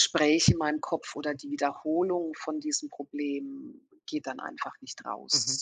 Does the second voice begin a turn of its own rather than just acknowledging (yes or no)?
yes